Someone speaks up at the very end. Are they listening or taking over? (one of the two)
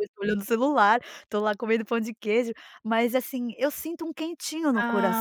taking over